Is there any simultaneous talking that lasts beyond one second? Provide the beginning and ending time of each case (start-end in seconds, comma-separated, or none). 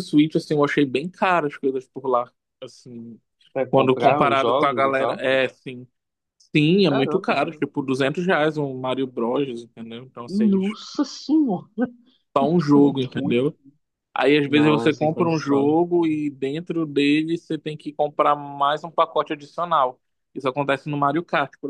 3.7-5.2, 14.4-15.7